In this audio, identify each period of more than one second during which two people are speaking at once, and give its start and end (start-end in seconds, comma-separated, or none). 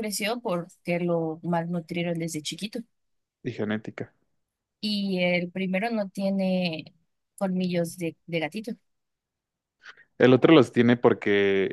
none